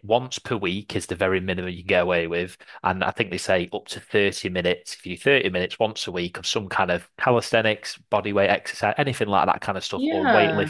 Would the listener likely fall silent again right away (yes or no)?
yes